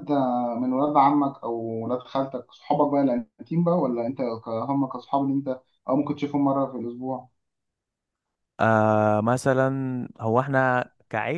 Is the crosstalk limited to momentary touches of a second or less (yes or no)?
yes